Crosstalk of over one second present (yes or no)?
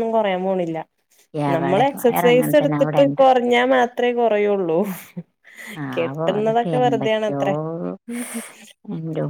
yes